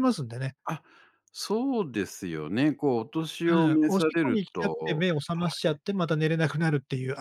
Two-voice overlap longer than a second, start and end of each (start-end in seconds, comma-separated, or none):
3.5-5.0